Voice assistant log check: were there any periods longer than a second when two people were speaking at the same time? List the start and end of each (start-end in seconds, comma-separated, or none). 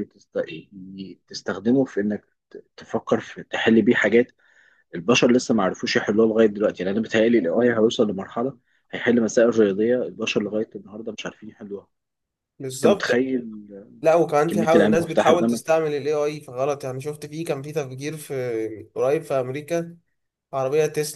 14.5-15.8